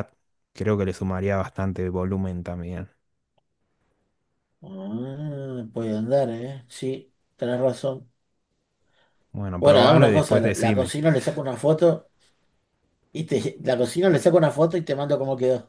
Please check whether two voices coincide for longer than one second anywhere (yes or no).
yes